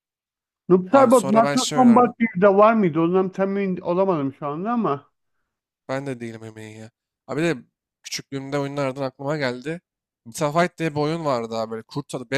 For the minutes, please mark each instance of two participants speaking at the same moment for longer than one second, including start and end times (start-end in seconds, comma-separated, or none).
0.9-2.1